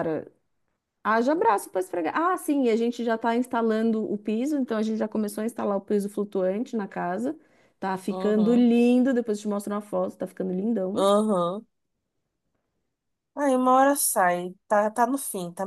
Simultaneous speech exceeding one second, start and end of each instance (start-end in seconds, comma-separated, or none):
none